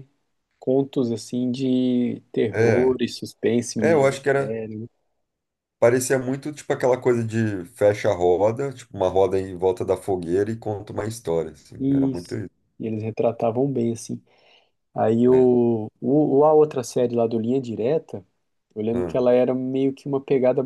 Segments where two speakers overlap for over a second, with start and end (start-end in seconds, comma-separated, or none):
none